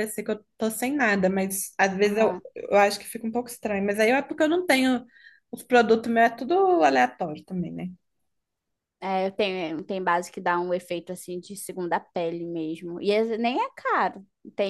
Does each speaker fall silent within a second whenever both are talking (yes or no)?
yes